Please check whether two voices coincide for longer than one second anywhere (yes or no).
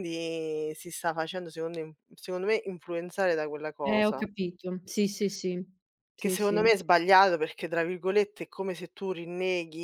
no